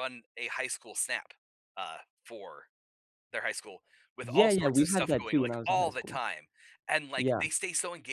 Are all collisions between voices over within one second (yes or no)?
no